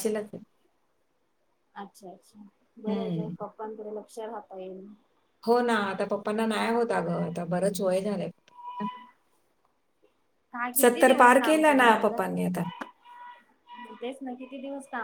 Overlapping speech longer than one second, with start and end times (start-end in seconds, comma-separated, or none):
10.8-12.6